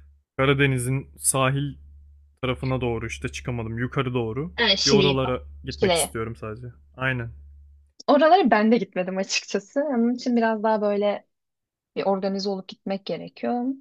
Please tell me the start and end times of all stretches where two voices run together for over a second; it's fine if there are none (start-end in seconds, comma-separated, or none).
4.5-6.2